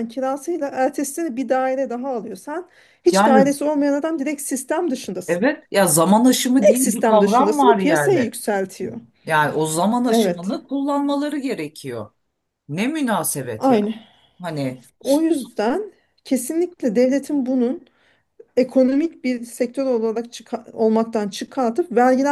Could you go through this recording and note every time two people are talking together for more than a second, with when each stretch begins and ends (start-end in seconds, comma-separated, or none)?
6.6-8.3